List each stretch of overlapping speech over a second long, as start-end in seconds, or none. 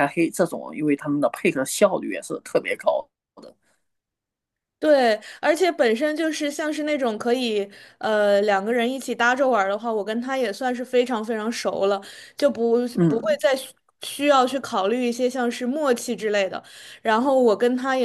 none